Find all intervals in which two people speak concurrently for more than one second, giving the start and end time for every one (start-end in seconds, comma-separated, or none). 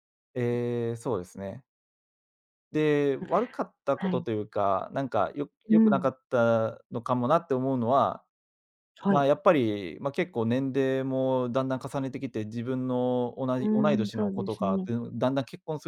13.6-14.9